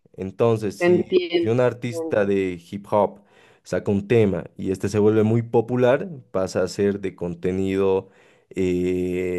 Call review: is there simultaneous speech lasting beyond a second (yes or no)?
yes